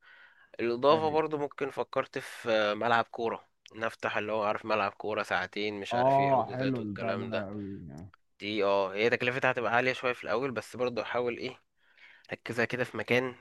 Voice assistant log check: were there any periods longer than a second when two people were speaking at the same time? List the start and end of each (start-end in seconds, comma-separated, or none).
5.9-7.5